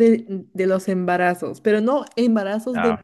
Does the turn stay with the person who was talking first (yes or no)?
yes